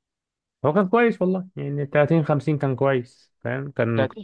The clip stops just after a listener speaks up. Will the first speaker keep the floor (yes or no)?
no